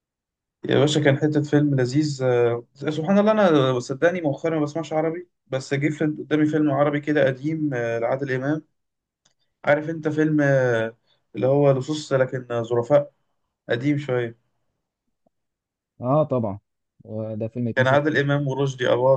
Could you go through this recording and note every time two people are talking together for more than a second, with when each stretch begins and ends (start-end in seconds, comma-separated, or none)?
none